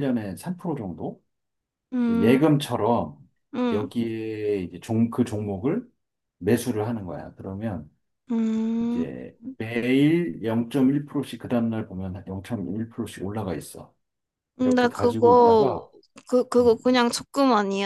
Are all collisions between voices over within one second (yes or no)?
no